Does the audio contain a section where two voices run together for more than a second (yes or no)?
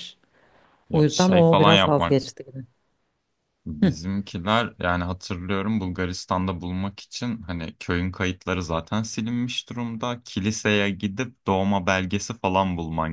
yes